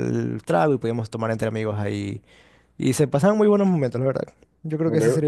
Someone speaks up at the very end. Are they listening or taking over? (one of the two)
listening